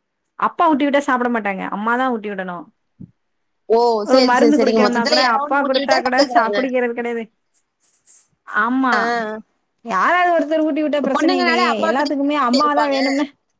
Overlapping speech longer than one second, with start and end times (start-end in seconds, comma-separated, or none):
4.1-6.6, 11.1-13.0